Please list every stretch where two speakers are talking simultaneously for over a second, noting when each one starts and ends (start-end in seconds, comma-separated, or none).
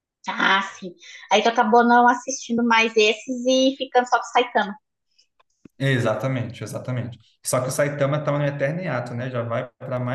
none